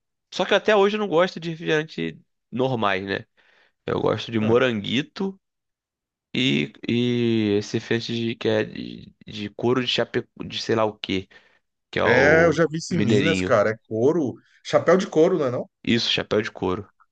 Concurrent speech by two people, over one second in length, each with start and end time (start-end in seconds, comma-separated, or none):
12.0-13.5